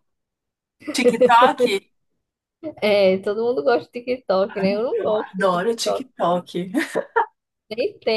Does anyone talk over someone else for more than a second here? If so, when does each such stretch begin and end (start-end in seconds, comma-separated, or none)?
4.5-6.1